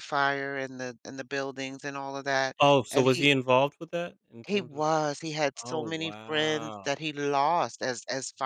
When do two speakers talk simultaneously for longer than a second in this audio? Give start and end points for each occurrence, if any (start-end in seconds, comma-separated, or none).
5.6-6.9